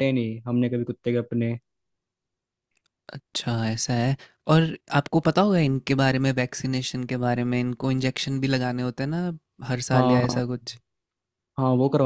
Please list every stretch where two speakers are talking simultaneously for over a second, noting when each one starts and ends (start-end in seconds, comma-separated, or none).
none